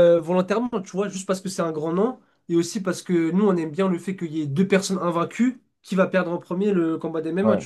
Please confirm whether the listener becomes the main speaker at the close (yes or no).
no